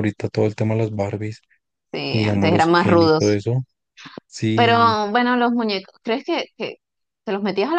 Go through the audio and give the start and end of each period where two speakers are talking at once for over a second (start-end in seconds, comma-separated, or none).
2.1-3.4